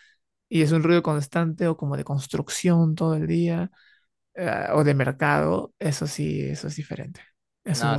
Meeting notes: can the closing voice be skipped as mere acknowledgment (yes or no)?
no